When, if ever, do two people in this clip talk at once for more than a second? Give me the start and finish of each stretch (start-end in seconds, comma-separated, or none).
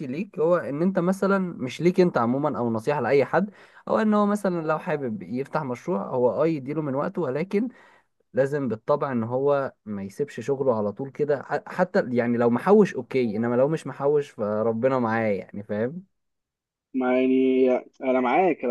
none